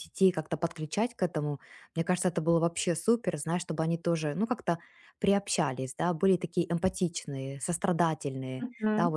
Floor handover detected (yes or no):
yes